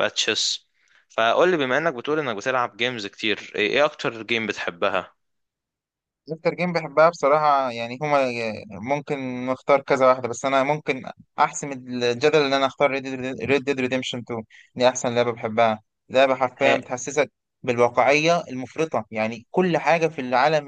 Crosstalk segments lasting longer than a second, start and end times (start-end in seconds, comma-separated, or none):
none